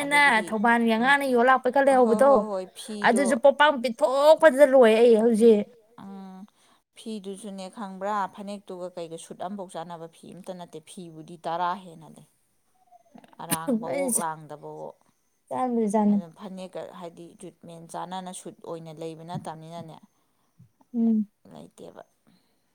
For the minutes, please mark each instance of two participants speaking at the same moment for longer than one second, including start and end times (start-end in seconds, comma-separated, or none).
none